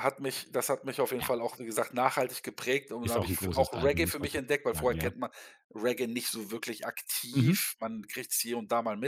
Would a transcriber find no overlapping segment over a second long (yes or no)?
no